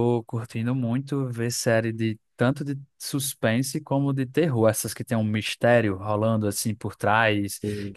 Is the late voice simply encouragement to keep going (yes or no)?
yes